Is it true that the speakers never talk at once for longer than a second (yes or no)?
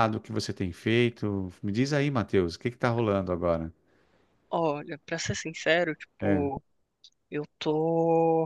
yes